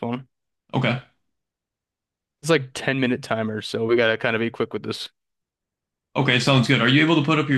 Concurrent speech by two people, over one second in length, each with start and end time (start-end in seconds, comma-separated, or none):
none